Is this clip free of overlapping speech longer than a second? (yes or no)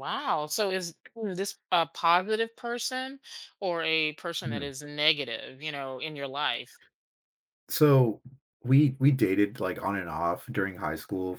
yes